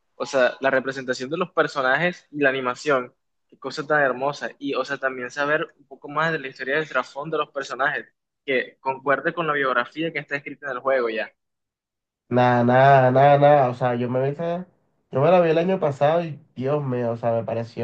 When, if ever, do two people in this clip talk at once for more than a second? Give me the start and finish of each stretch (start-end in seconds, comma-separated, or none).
none